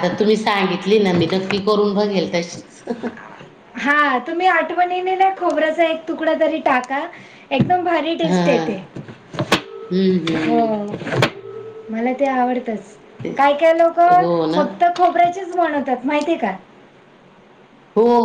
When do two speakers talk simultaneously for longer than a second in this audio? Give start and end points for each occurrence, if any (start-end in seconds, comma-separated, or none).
none